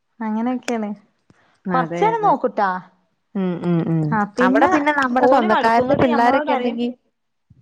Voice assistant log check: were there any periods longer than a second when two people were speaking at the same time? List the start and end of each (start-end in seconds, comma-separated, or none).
5.3-6.8